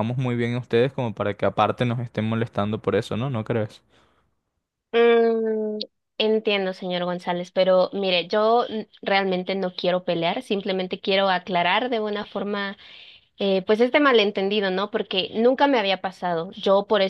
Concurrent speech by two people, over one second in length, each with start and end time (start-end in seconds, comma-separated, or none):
none